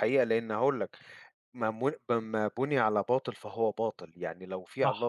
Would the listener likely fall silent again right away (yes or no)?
yes